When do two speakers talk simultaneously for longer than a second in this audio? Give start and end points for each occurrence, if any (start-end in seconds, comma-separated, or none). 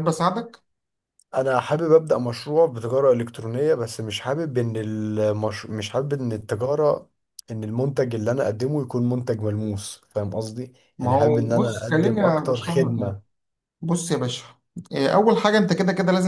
11.0-13.2